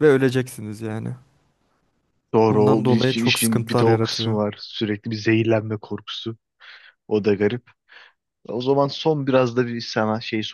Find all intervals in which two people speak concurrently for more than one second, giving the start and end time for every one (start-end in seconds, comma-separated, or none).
2.5-4.4